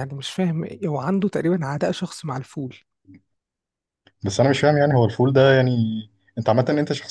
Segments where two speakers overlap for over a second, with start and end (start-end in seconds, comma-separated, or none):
none